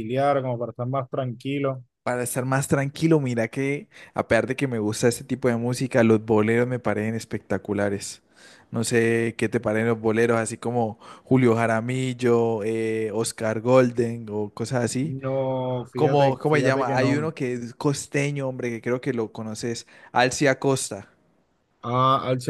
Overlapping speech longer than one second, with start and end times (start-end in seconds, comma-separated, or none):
15.9-17.3